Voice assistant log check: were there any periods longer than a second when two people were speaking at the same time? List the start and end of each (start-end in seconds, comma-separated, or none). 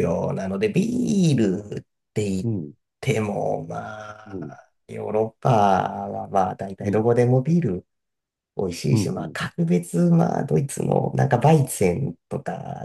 none